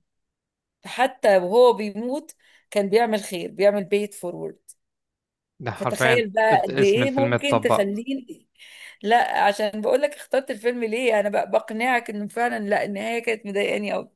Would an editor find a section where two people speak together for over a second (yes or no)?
yes